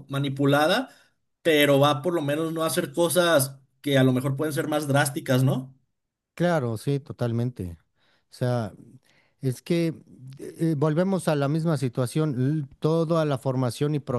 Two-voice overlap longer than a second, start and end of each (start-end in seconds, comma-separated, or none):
none